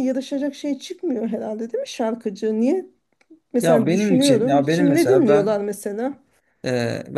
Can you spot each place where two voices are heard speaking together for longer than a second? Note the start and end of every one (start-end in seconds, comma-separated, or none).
3.6-5.6